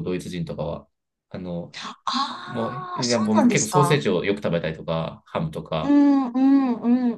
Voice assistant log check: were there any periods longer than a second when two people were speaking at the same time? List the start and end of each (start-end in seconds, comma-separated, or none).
2.5-4.0